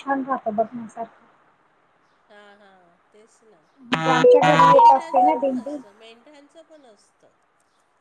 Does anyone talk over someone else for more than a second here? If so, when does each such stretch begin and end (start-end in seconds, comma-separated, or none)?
4.3-5.8